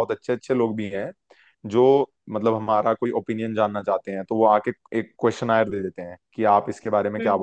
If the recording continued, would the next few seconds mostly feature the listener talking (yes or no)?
no